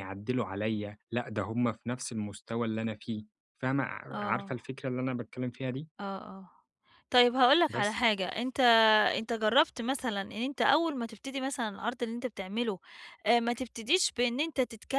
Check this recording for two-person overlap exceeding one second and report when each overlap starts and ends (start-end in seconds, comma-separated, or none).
none